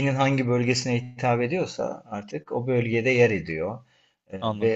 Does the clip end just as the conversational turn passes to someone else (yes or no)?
no